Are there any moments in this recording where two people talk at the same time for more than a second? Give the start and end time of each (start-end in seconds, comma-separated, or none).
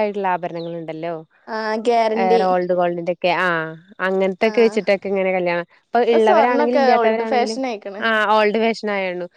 6.3-7.6